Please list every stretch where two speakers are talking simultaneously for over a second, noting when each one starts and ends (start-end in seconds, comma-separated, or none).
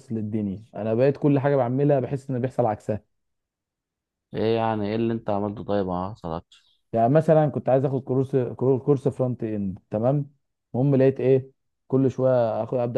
none